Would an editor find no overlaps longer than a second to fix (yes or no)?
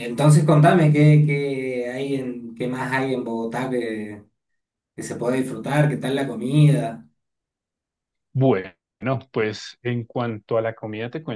yes